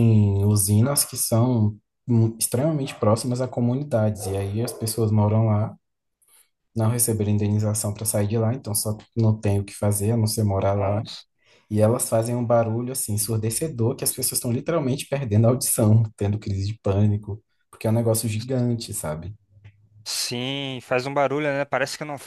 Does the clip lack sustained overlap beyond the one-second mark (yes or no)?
yes